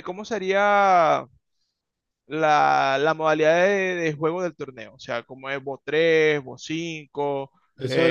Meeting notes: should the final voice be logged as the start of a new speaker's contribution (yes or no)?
yes